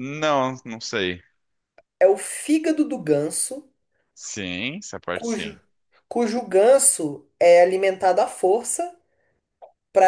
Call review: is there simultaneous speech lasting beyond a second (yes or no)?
no